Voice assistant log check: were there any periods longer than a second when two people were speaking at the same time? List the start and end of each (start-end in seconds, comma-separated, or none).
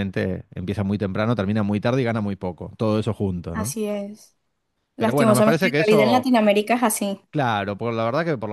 5.0-6.3